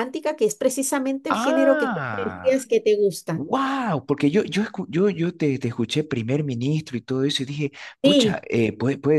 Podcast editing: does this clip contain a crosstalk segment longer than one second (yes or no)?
yes